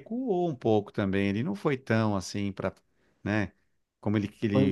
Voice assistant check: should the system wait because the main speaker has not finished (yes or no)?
yes